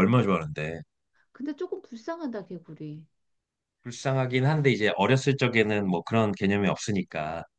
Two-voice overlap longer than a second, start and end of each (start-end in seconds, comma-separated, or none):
none